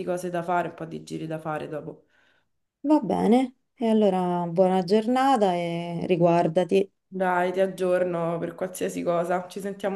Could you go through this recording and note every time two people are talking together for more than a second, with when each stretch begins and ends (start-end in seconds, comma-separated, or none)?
none